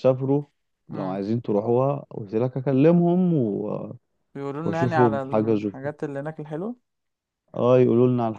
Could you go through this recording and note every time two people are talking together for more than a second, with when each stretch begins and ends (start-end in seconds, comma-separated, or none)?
4.6-5.9